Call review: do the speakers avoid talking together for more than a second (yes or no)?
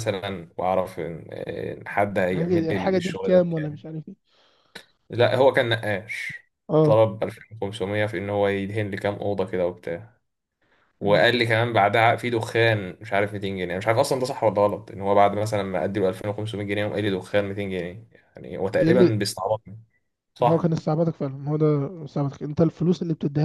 no